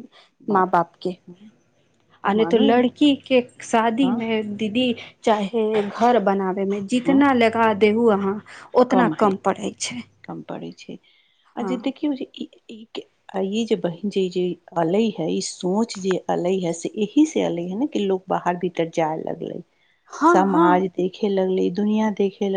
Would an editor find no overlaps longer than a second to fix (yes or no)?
yes